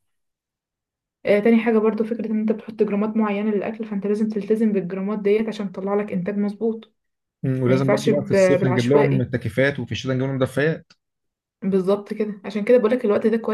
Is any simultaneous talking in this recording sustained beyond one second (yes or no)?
yes